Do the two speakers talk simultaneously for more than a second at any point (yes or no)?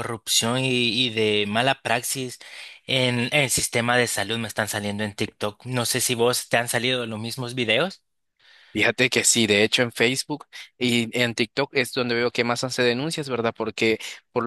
no